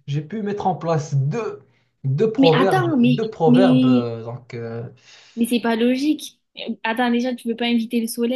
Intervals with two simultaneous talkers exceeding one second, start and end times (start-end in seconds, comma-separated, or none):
2.4-4.1